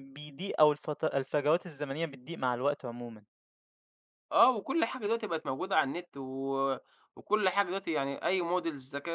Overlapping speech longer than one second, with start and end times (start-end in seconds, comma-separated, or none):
none